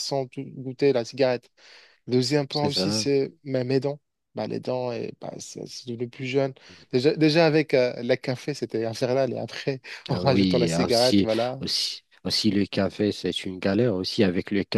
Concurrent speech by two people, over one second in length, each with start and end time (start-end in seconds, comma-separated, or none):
10.1-11.6